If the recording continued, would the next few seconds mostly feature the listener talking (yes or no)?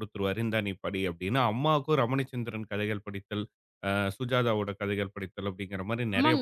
yes